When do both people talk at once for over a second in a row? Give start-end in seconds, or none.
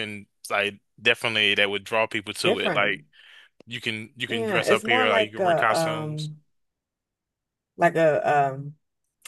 4.2-6.3